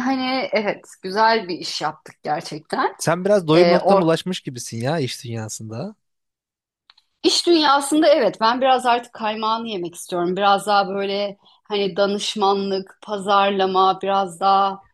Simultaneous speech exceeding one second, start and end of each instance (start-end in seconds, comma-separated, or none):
none